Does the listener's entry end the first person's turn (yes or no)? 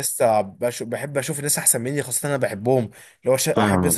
no